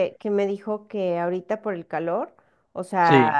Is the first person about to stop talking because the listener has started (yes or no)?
no